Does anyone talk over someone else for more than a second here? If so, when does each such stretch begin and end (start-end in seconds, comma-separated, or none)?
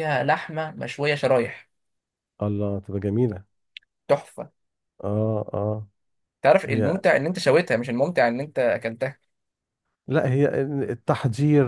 none